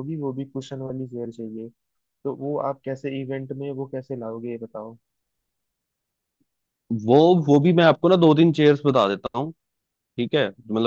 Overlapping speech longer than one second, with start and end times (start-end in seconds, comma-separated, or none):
none